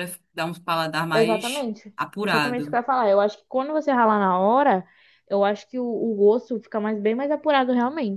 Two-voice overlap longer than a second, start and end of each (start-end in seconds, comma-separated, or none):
1.1-2.8